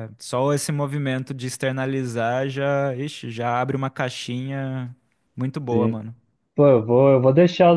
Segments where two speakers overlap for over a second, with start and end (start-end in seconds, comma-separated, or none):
none